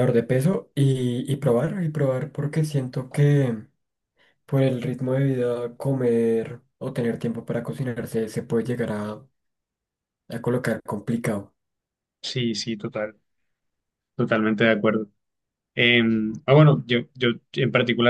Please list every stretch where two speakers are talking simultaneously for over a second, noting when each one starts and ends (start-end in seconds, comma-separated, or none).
none